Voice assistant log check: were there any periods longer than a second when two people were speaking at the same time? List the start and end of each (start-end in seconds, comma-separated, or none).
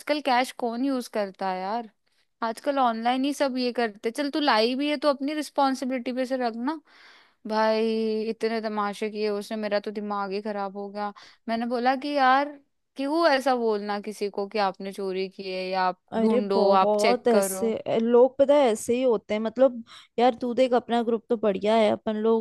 16.1-17.7